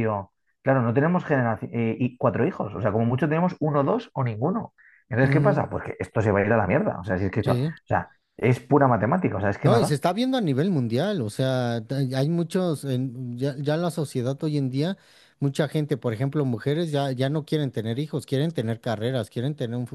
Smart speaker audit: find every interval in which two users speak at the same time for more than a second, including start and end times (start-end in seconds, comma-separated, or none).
none